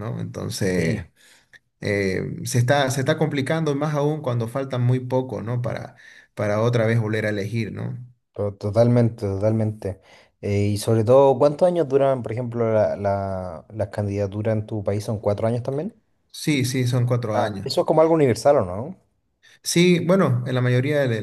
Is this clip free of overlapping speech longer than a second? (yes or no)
yes